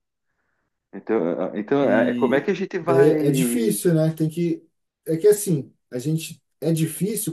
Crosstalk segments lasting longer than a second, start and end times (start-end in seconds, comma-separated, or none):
1.8-3.8